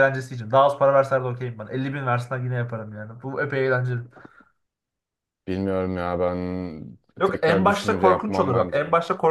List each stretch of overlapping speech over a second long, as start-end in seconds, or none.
7.2-8.8